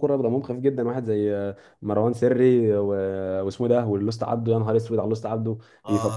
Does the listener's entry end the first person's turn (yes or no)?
yes